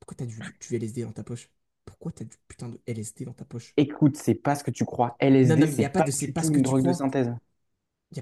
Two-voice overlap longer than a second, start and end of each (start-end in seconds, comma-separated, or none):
5.4-7.1